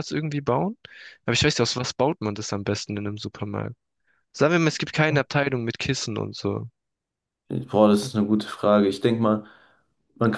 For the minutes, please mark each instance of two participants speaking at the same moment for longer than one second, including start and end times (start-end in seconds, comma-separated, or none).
none